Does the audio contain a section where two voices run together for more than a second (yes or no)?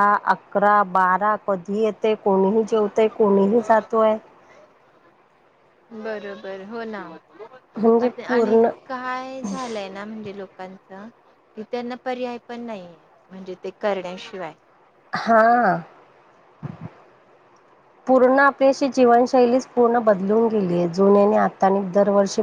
no